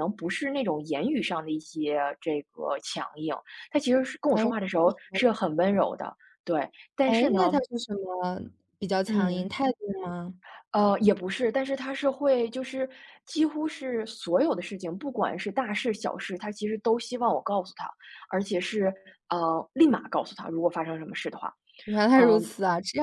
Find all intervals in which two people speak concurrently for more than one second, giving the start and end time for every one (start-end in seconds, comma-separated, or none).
none